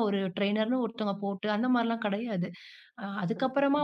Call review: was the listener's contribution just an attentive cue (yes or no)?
yes